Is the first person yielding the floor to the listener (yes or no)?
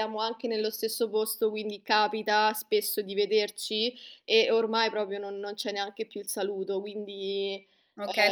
yes